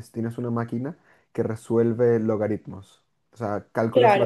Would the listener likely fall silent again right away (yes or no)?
yes